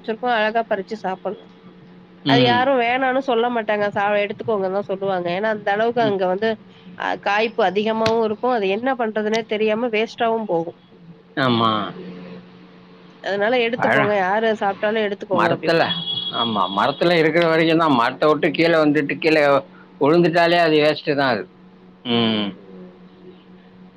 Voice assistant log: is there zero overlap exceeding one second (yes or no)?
yes